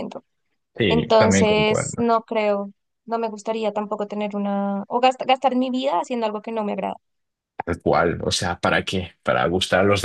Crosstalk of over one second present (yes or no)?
yes